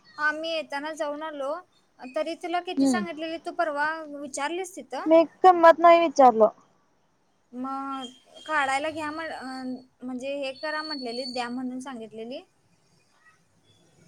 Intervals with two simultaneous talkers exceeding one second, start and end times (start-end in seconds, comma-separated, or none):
none